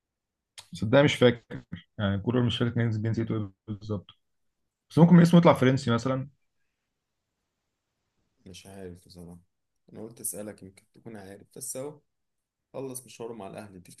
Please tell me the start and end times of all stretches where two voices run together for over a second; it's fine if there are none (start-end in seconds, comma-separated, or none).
none